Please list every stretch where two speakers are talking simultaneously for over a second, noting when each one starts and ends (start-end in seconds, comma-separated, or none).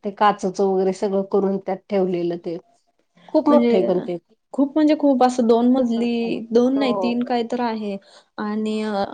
none